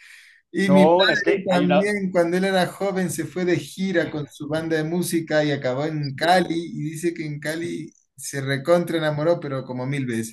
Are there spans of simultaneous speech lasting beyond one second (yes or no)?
yes